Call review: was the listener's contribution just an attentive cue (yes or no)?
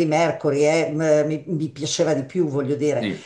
yes